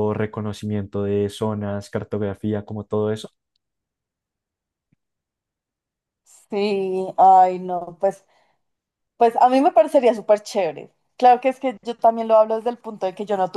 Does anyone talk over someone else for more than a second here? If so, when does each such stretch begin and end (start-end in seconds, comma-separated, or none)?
none